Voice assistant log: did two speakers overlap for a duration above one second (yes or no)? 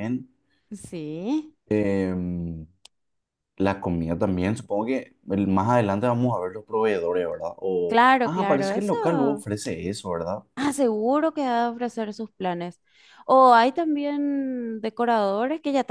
yes